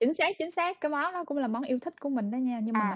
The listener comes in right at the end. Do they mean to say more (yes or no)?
yes